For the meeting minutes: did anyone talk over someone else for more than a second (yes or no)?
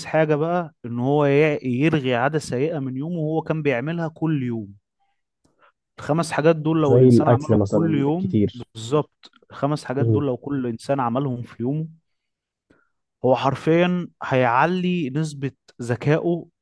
yes